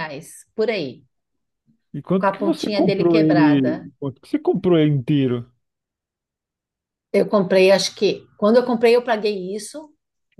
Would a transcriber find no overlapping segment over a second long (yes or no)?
no